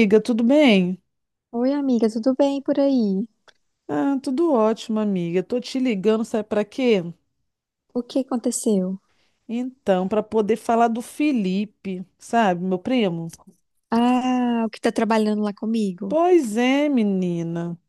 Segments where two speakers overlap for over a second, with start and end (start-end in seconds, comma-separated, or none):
none